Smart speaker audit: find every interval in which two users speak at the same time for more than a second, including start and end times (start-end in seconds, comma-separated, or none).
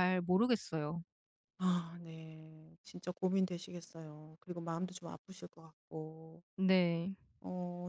none